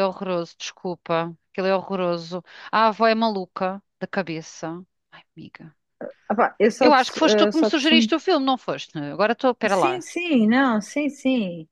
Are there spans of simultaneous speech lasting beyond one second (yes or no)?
yes